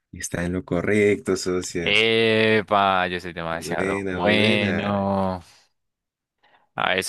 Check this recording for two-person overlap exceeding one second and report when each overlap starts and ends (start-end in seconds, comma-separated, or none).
3.5-5.1